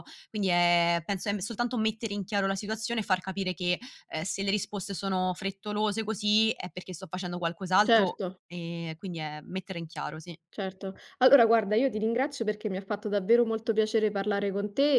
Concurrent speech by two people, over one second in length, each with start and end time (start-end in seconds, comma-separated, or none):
none